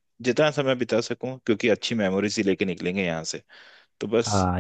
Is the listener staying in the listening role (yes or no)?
no